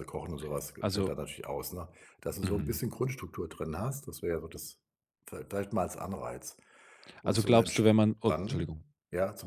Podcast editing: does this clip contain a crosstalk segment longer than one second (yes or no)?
yes